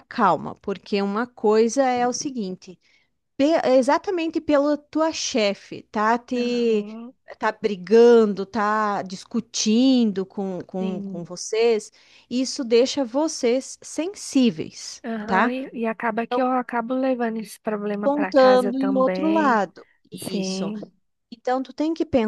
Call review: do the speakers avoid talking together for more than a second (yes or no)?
no